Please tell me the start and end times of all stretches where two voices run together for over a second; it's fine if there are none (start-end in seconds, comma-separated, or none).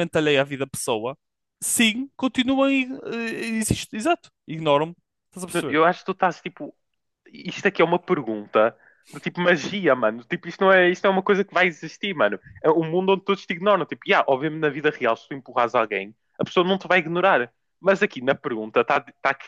none